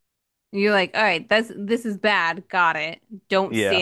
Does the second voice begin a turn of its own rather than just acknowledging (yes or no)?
no